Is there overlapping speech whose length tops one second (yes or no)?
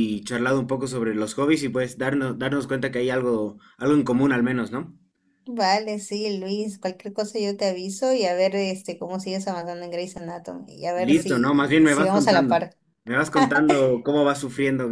yes